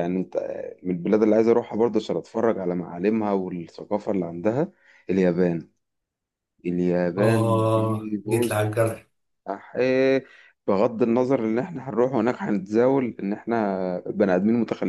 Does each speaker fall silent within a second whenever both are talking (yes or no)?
no